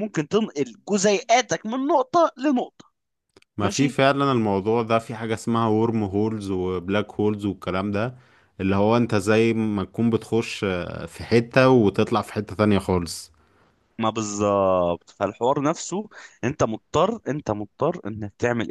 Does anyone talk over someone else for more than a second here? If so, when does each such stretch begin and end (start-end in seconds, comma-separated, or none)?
none